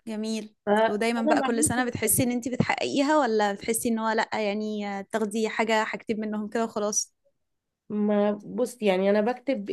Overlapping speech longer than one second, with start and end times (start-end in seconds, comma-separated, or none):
0.7-2.2